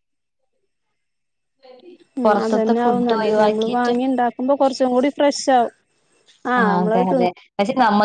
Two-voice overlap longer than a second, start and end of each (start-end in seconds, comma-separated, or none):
2.2-3.9